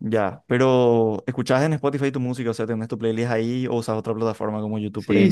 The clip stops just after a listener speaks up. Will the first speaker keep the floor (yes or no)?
no